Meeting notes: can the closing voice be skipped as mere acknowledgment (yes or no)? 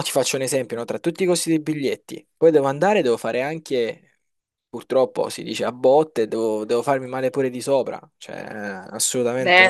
no